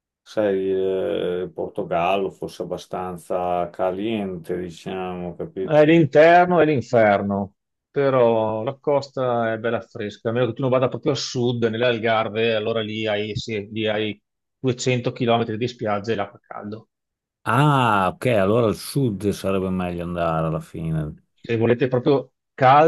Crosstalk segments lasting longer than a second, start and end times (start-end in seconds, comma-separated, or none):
none